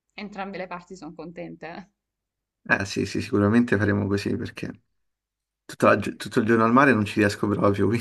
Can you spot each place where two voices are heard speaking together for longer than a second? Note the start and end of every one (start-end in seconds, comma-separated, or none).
none